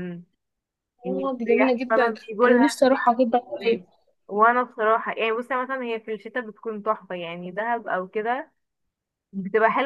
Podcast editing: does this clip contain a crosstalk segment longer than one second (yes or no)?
yes